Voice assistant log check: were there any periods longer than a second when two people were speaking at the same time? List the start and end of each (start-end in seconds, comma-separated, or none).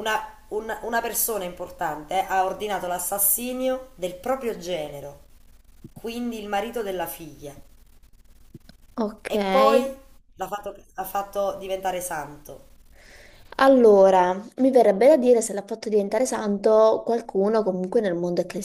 none